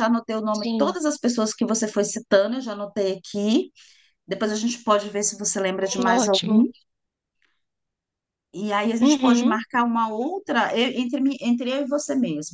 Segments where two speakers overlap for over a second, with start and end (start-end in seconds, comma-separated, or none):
none